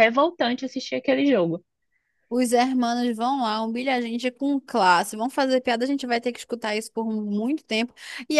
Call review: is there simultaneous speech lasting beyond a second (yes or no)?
no